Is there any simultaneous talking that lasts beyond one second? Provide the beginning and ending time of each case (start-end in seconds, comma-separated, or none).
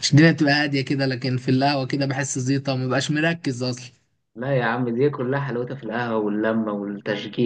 none